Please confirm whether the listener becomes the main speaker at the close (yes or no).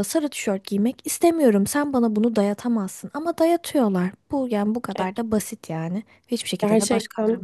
yes